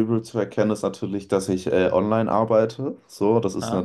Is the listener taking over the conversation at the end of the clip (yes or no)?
no